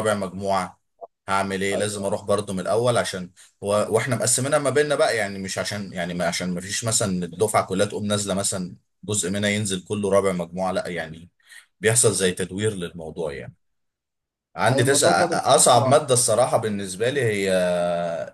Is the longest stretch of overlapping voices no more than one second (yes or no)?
no